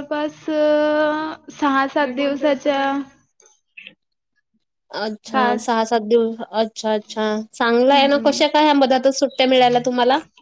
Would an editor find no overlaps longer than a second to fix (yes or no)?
yes